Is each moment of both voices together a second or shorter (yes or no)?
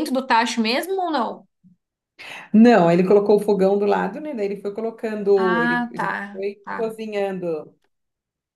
no